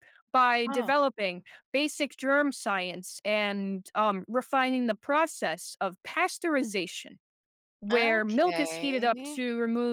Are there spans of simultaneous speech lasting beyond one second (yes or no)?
yes